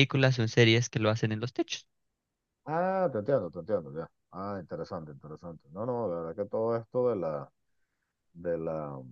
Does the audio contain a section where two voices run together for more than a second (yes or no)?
no